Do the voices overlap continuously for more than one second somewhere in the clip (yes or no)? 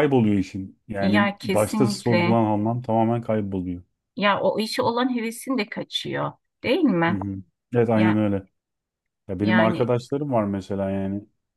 yes